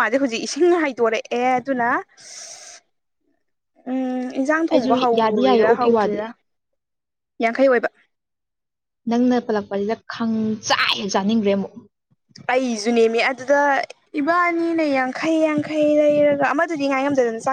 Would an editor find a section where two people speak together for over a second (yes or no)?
yes